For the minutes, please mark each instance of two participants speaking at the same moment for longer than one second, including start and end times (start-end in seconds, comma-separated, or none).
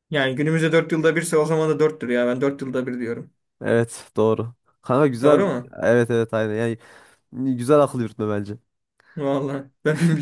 none